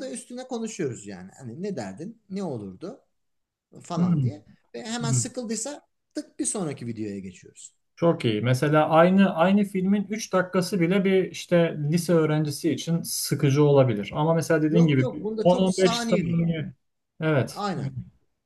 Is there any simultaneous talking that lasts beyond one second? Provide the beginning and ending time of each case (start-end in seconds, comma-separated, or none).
14.7-16.4